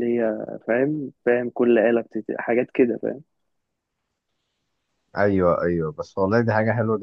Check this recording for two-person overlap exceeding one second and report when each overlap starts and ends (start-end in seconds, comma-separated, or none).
none